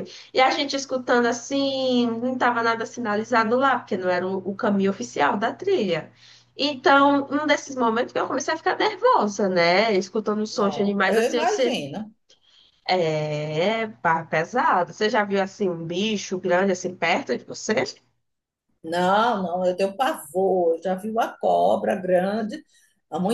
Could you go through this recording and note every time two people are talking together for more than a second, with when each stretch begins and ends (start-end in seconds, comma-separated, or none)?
10.5-11.8